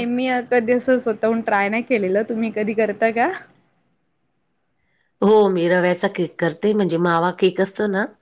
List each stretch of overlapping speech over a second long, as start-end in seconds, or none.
none